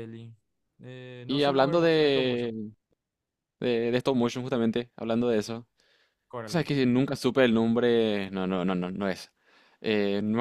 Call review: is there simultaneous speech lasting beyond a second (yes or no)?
yes